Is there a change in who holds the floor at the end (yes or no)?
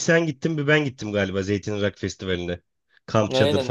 yes